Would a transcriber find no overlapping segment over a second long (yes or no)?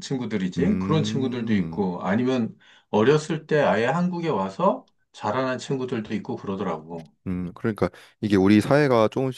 no